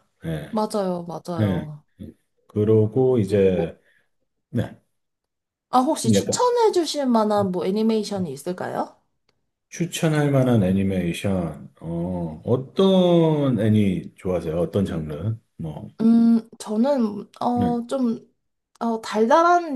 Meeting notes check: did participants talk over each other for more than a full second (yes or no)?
no